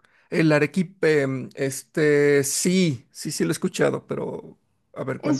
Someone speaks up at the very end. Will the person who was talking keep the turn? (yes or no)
no